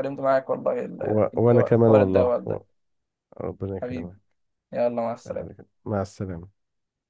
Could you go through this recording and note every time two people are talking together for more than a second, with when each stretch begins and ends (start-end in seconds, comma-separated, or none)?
1.0-2.6